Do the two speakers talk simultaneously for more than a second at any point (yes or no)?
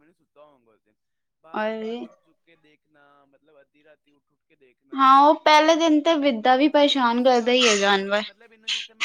yes